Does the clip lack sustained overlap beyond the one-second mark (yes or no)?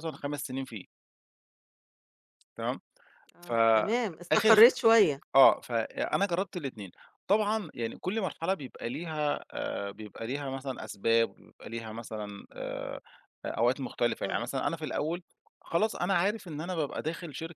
no